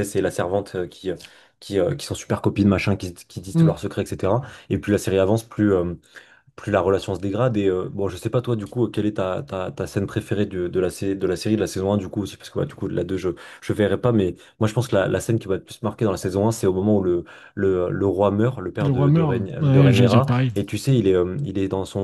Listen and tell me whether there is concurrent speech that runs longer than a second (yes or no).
yes